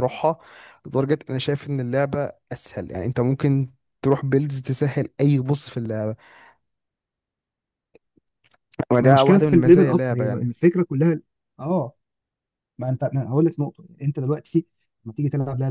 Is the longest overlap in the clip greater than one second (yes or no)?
yes